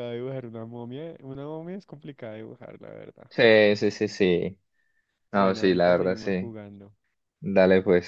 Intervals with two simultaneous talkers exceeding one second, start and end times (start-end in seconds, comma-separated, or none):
5.3-6.5